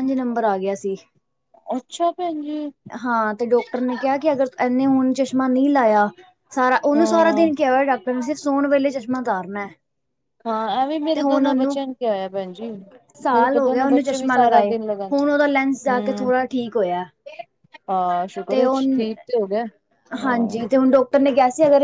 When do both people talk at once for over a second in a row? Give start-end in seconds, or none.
13.3-14.7